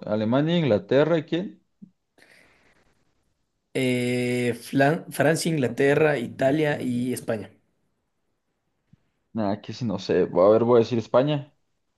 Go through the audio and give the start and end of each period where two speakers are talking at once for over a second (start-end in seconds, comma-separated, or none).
5.6-6.8